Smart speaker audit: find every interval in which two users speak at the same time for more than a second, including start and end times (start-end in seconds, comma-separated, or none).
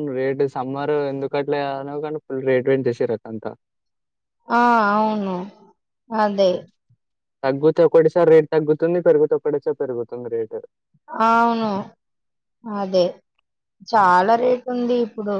none